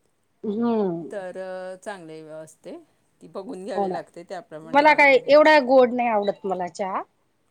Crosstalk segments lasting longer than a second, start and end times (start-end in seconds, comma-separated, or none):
3.8-5.5